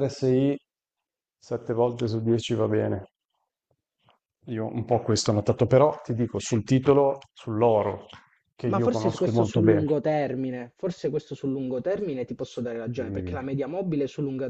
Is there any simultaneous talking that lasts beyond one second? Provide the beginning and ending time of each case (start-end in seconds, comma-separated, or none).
8.6-9.8